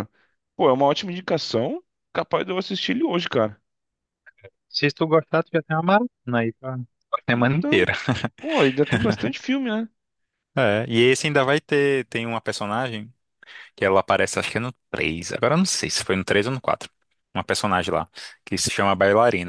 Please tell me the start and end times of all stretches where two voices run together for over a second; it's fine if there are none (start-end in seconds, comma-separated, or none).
none